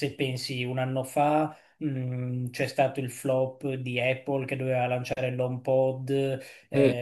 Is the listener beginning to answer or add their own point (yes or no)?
no